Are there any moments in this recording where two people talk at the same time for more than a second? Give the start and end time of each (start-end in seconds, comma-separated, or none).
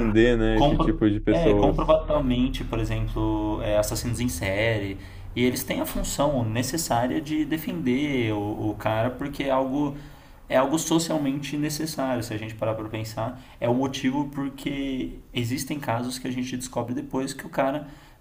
0.5-2.0